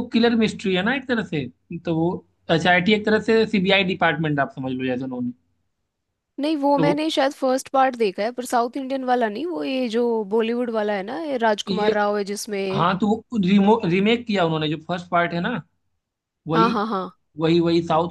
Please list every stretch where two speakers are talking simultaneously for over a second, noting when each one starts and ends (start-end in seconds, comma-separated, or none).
none